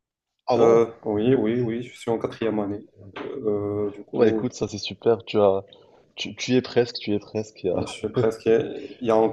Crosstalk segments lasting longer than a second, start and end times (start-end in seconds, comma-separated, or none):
none